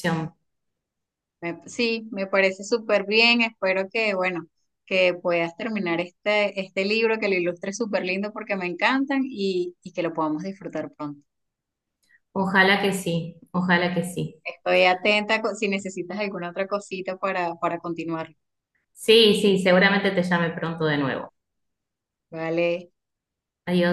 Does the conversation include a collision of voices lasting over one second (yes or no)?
no